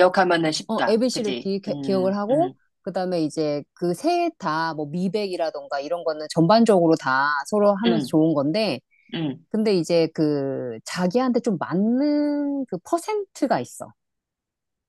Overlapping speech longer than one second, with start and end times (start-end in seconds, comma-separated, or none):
0.7-2.5